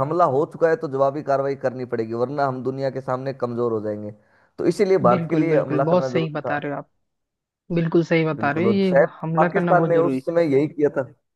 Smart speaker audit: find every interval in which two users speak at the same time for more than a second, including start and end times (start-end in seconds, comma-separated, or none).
5.1-6.5, 8.3-10.4